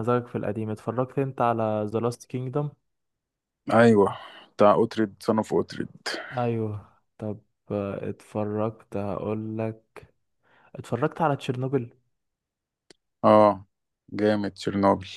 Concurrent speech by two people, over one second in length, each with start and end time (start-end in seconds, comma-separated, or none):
none